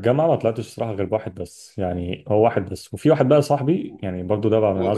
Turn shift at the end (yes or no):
yes